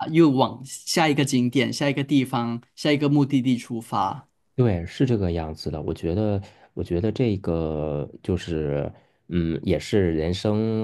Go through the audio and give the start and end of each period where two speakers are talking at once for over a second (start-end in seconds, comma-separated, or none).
none